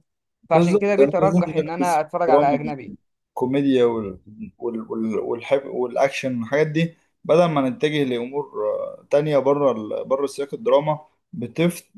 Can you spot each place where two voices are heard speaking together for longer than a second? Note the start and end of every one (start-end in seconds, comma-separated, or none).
0.5-2.7